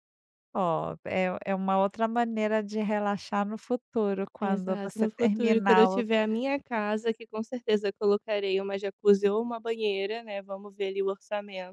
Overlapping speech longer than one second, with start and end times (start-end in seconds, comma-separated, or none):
4.4-6.0